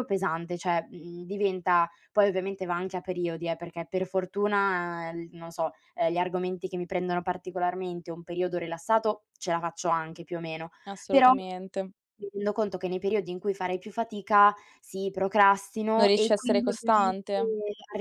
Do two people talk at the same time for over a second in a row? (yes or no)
yes